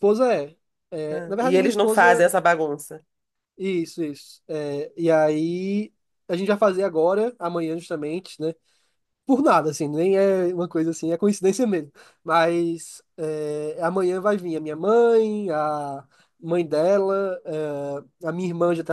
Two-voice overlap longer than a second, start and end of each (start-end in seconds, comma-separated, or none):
1.1-2.3